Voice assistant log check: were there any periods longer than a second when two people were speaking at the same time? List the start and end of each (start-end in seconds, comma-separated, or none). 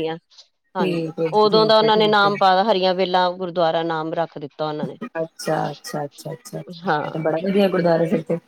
0.8-2.3